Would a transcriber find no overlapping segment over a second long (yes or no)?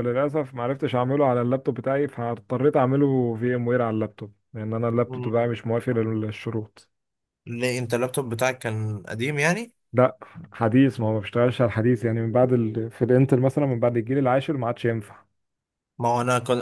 yes